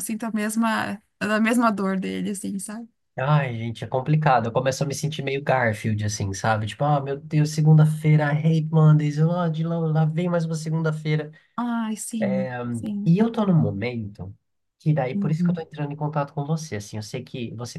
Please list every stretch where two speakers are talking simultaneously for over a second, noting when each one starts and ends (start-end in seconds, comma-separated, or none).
none